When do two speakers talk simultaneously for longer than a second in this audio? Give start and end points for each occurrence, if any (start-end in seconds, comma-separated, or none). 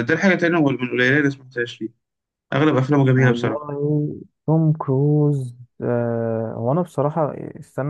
none